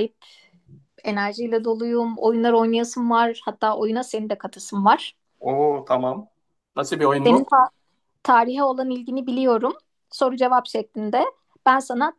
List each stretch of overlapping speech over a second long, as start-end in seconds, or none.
none